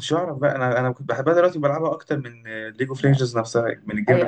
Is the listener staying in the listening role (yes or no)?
no